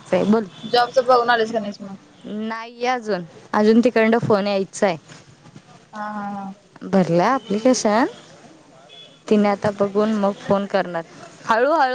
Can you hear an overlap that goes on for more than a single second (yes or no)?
no